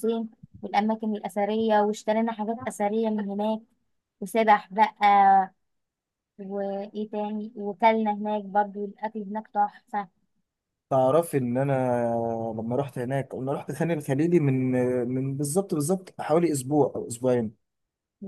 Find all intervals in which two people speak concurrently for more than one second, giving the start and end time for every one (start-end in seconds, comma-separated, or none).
none